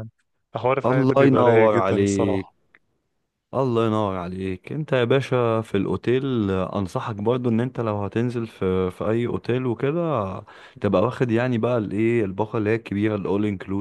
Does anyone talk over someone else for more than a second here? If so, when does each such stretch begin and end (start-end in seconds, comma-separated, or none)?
0.8-2.5